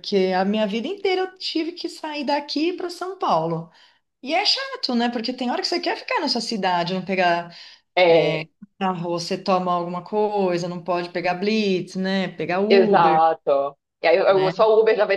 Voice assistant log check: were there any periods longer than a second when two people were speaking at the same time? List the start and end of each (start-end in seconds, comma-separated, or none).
none